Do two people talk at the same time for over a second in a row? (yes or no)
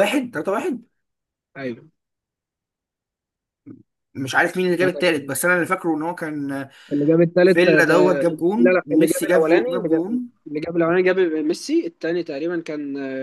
yes